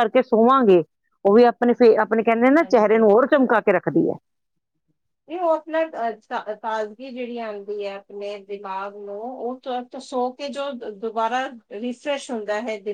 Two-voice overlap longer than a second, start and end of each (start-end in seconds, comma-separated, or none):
none